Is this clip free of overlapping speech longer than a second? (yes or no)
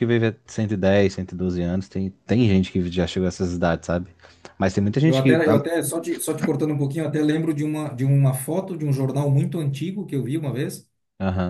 yes